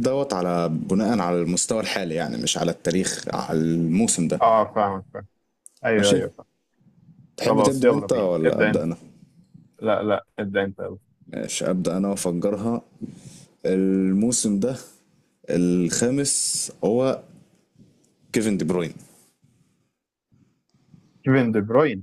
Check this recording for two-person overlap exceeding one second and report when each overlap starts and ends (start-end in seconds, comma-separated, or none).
7.5-8.8